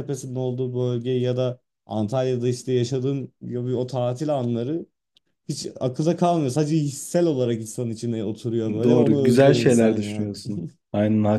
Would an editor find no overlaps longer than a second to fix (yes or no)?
no